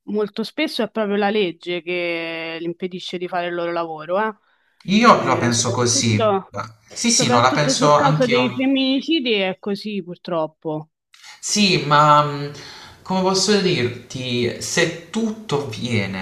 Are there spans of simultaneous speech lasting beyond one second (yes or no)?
yes